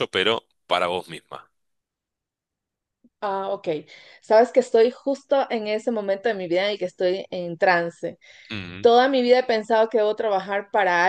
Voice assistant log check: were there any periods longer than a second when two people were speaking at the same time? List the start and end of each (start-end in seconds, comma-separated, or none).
none